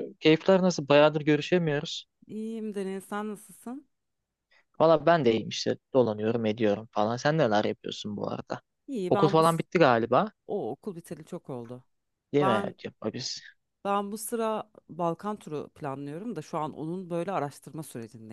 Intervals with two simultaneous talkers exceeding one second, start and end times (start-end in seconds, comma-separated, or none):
none